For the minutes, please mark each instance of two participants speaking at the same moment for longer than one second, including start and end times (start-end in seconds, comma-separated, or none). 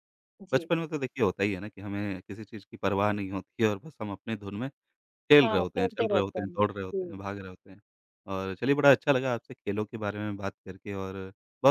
5.4-7.2